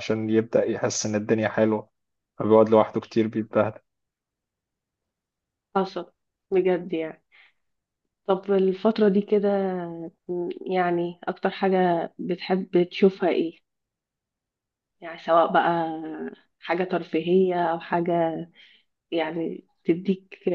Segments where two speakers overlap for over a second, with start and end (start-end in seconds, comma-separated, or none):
none